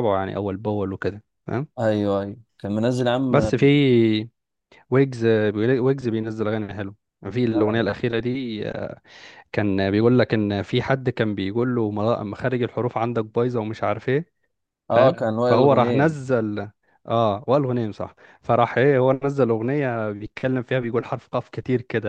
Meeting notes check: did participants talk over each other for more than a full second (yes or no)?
yes